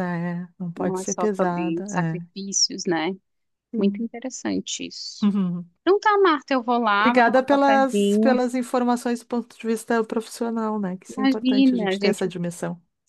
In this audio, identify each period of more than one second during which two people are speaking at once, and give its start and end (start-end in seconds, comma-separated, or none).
0.8-2.3, 7.0-8.4, 11.1-12.3